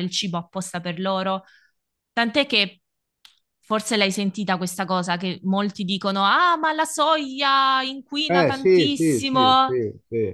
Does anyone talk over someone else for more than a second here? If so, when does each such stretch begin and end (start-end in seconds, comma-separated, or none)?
8.3-9.8